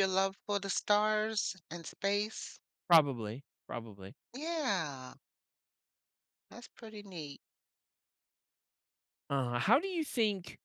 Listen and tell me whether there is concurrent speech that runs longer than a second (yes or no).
no